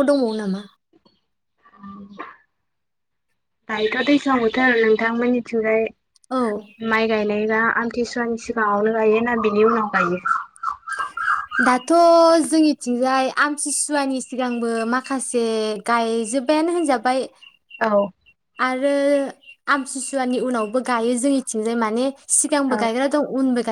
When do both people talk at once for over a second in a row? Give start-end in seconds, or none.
none